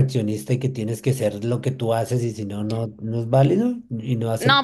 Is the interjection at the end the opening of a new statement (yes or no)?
yes